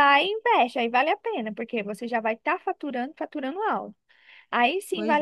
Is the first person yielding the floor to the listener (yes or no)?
no